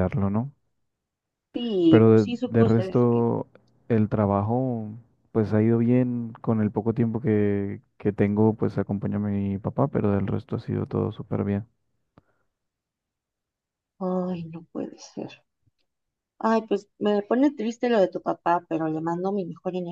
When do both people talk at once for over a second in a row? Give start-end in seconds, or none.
1.9-3.3